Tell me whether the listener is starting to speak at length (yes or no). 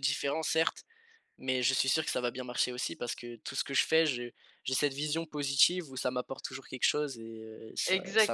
yes